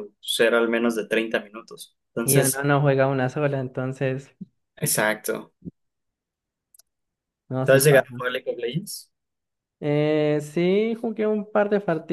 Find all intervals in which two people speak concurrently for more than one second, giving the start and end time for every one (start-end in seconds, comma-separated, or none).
none